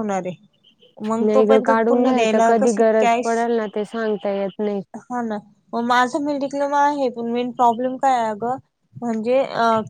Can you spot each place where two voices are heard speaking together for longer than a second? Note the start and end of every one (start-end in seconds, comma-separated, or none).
1.2-3.4